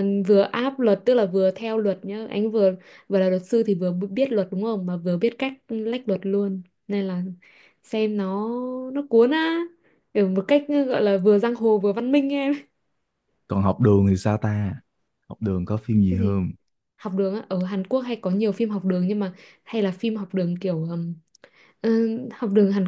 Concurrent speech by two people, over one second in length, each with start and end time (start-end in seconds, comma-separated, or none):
none